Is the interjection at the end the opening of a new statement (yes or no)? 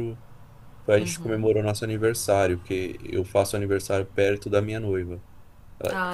no